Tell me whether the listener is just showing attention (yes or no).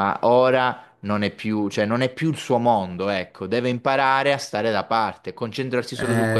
no